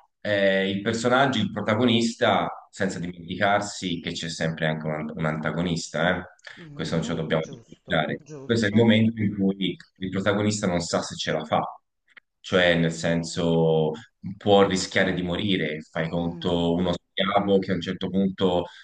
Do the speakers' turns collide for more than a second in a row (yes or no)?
yes